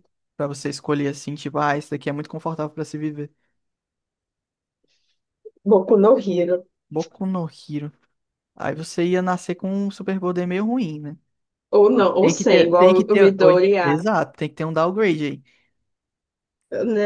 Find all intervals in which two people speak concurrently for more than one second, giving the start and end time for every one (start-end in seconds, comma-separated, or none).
12.2-13.7